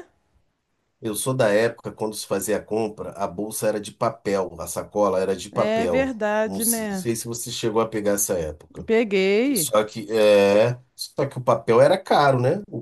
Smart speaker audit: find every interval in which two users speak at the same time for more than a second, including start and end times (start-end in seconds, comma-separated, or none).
5.5-7.1